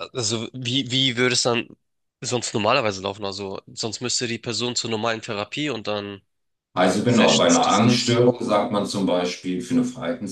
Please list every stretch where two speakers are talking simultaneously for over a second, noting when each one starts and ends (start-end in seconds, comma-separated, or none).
7.0-8.2